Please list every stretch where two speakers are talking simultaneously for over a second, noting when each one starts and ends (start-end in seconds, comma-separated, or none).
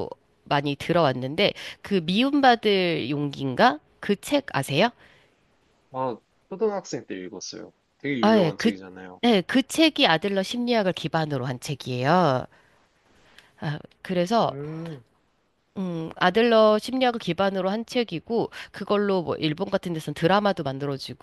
none